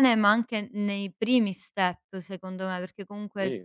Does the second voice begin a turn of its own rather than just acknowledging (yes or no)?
no